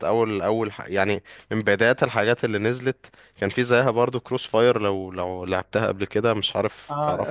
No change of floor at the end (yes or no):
no